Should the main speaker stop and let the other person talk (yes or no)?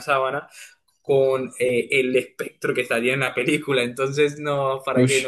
no